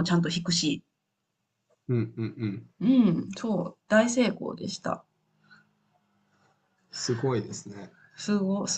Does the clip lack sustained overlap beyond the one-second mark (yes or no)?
yes